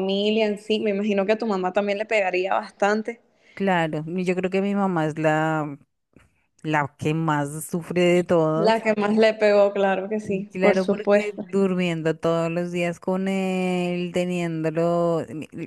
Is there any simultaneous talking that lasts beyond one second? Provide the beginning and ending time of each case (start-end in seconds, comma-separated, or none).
10.2-11.4